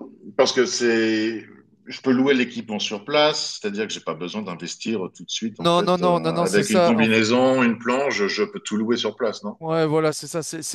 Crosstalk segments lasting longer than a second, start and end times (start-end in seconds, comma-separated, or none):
5.6-7.1